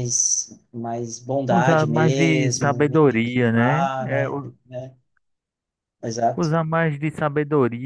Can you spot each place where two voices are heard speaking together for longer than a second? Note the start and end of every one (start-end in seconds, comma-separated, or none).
1.5-4.5